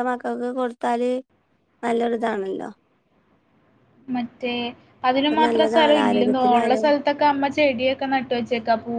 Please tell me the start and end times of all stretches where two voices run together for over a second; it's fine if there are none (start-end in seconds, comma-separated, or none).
5.2-6.9